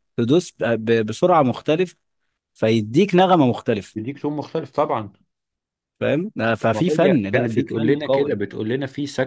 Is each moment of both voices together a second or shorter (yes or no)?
no